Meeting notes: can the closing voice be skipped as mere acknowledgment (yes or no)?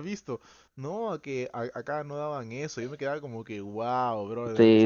no